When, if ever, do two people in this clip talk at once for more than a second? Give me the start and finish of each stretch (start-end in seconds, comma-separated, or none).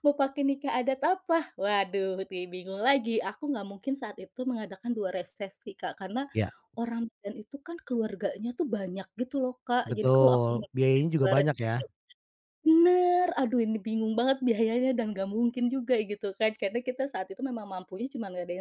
9.8-11.7